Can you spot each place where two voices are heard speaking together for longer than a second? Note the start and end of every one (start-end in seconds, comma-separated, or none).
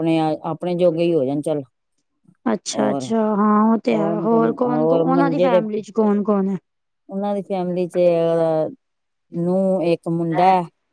3.9-5.6